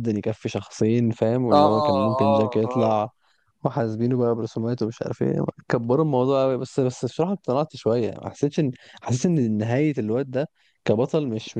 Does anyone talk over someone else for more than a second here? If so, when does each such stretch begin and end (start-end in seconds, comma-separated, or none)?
1.5-3.1